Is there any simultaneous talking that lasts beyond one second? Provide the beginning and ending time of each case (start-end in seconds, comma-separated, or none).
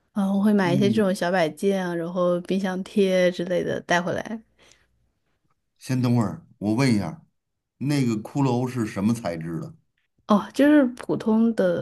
none